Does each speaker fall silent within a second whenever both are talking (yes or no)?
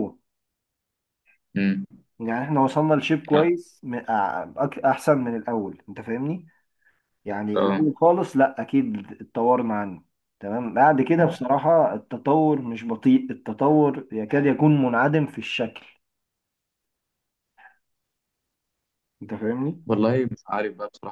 yes